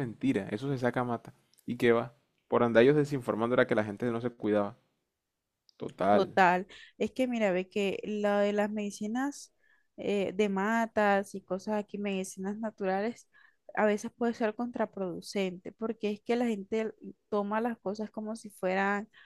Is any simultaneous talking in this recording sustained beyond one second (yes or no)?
no